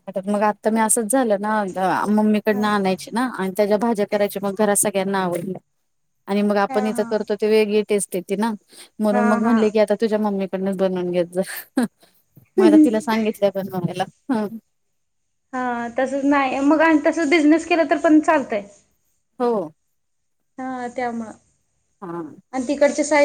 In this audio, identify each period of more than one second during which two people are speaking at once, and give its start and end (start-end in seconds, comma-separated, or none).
none